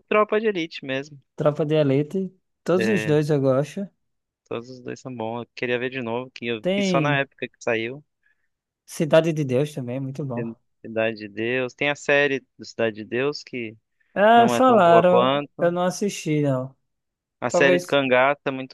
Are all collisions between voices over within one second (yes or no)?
no